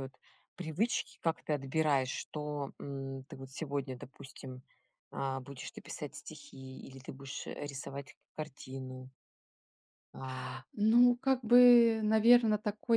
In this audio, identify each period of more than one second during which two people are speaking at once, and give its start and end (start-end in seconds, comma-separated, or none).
none